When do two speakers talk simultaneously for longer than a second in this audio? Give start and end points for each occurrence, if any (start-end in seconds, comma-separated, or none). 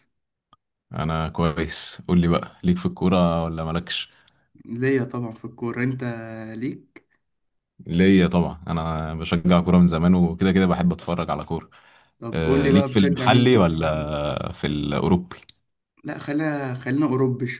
12.3-13.6